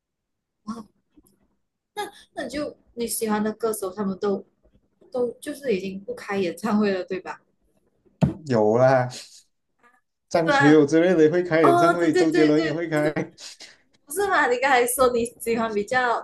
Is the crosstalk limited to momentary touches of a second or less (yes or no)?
no